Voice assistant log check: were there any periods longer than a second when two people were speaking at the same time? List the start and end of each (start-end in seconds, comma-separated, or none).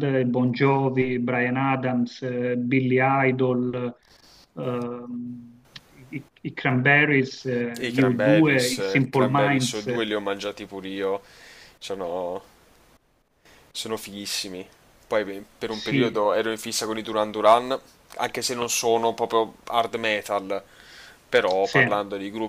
7.8-9.9